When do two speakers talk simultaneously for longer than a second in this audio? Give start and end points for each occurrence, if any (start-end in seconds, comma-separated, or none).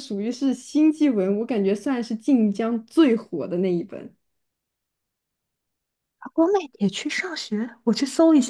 none